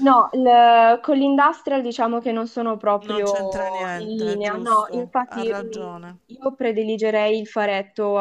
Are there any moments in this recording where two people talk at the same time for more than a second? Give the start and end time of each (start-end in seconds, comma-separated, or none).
4.0-6.2